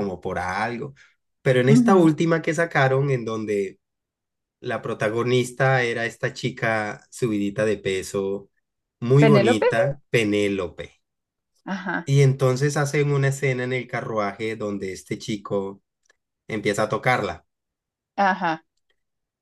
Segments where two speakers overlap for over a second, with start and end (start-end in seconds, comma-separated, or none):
none